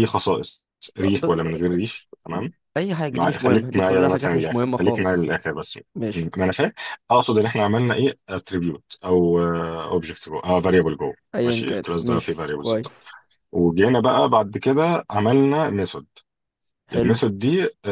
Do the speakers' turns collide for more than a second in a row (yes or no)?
yes